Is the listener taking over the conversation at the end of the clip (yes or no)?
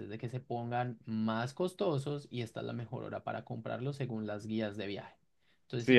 yes